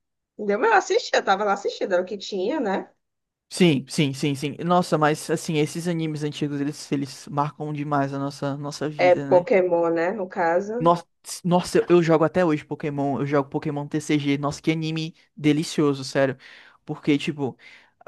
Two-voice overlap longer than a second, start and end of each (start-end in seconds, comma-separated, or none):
none